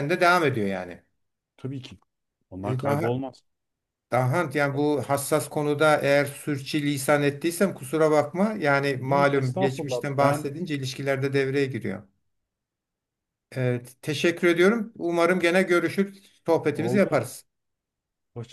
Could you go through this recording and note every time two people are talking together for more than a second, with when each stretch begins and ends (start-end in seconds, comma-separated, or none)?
9.0-10.5